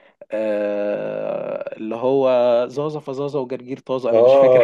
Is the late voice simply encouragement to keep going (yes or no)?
no